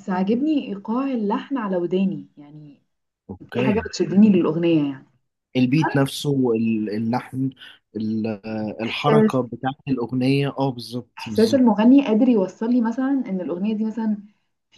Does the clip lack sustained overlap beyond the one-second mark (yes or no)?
yes